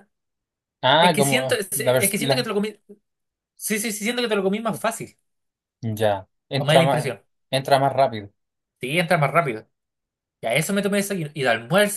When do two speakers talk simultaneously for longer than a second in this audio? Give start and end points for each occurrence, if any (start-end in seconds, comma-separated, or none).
1.0-2.4